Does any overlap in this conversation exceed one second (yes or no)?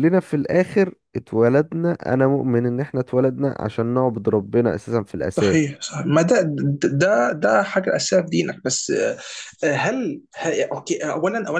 no